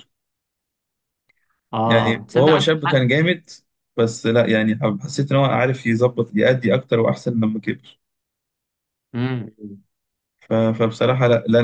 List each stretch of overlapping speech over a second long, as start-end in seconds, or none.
1.8-3.1